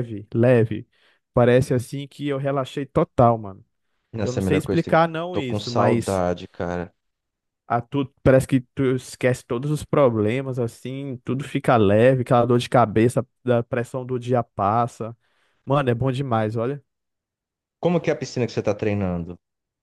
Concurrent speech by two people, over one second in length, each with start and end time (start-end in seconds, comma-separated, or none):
4.2-6.2